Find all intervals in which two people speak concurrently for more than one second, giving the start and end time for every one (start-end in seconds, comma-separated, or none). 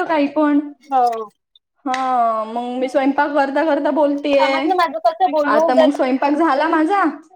none